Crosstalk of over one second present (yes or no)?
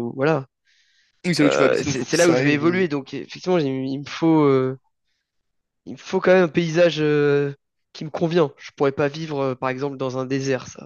yes